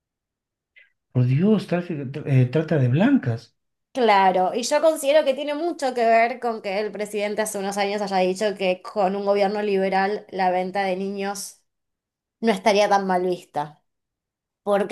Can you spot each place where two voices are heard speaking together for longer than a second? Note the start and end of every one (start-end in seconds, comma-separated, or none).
none